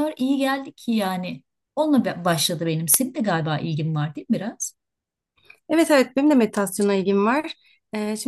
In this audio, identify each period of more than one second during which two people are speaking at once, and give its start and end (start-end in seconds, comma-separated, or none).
none